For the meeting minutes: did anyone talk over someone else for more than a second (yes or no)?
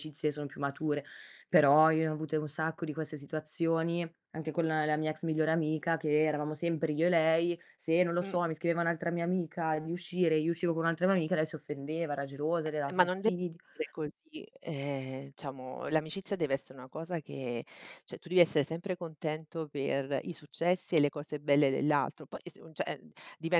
no